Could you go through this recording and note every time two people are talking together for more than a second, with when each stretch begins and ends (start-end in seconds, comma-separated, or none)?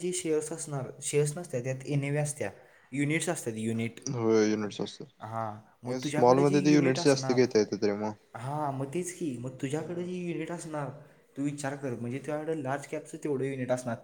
6.0-7.4